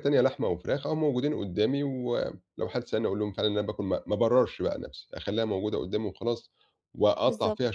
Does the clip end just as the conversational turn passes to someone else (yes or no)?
no